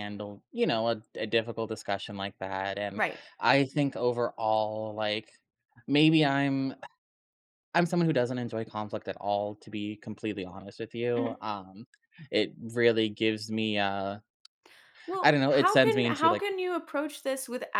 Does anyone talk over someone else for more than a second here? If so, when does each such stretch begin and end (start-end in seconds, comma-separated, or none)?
15.2-16.4